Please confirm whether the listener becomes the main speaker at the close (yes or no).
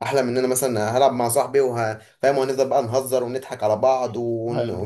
no